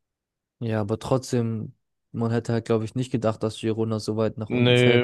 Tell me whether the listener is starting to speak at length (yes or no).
yes